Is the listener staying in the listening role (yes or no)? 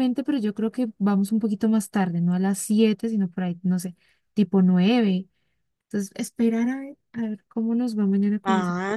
no